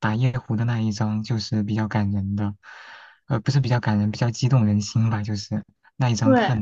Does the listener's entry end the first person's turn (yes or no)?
no